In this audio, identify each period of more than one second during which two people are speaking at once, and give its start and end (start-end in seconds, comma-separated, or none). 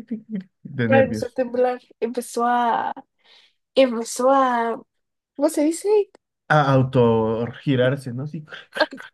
none